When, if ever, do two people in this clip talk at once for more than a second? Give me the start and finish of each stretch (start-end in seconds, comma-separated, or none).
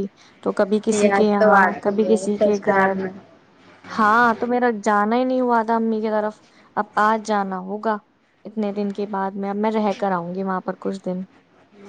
0.9-2.9